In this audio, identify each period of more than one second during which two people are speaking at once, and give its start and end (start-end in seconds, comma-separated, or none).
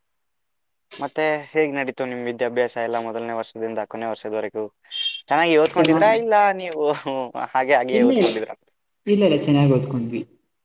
none